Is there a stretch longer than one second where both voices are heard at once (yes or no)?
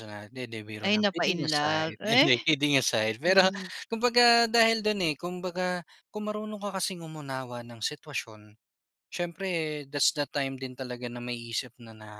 yes